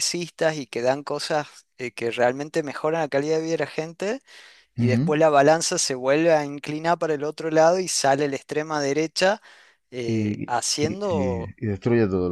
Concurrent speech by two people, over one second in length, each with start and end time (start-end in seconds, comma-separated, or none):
10.1-11.5